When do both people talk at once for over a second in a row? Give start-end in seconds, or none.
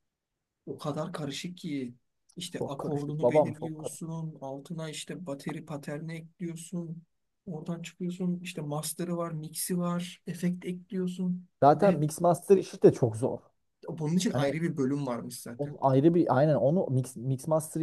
2.6-4.0